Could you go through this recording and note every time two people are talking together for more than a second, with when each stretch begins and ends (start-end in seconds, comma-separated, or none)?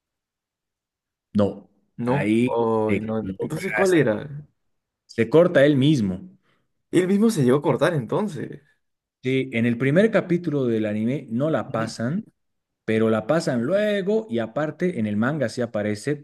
2.0-4.0